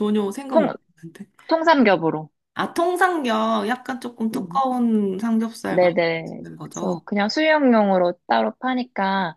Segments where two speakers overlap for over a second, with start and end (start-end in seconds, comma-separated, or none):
5.7-7.0